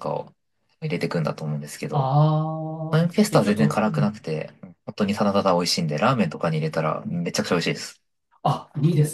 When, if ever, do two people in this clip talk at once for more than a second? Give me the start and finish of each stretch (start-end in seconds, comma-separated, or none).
2.9-4.2